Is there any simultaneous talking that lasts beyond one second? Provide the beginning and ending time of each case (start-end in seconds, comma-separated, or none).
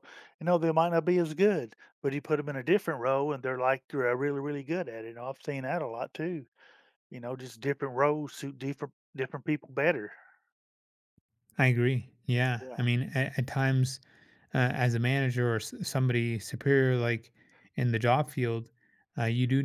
none